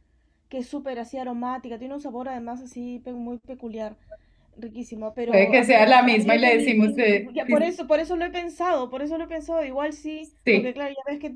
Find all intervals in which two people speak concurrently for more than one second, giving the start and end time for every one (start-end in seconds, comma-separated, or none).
5.3-7.4